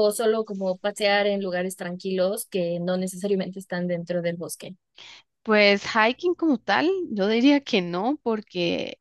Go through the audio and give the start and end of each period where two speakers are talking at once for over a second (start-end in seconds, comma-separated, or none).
none